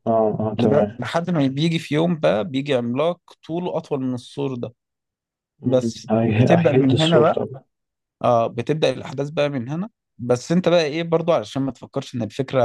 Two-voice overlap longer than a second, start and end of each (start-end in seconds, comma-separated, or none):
5.6-7.4